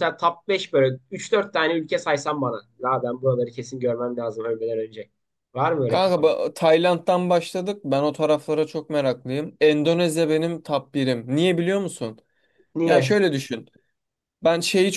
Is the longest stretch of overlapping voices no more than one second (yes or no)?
yes